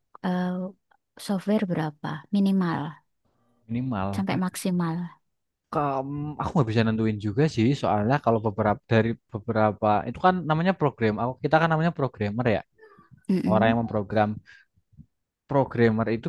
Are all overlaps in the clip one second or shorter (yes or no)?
yes